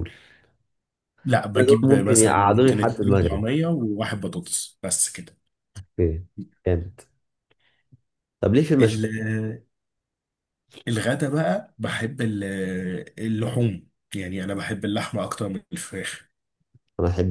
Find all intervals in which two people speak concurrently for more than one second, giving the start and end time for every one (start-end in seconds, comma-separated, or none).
1.6-3.4